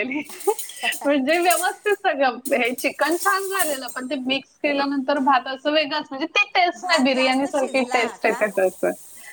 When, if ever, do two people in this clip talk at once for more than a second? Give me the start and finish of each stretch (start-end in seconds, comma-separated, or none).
6.8-8.4